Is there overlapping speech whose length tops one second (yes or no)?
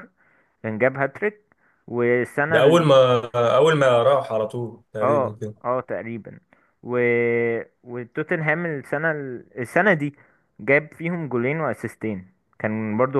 no